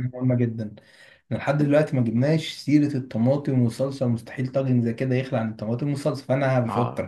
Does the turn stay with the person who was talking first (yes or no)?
yes